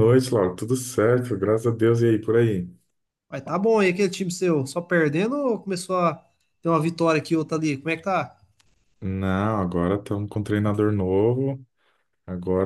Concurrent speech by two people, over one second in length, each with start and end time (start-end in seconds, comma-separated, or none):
none